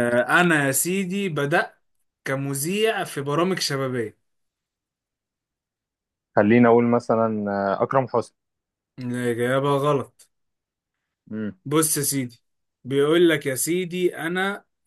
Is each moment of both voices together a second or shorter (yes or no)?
yes